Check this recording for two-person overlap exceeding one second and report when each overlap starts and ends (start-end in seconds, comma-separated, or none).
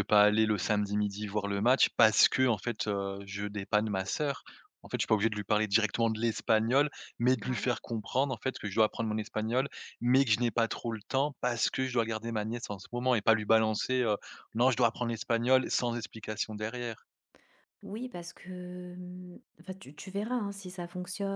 none